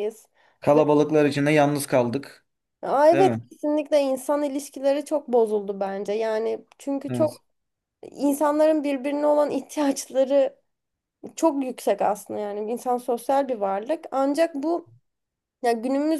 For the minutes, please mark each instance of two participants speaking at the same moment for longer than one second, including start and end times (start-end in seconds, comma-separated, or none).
none